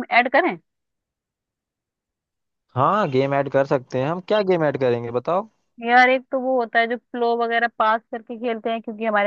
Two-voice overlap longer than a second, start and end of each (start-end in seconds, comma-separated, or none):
none